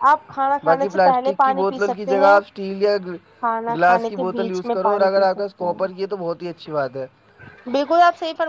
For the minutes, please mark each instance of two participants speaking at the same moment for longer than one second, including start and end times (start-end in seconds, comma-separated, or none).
0.6-2.4, 3.7-6.0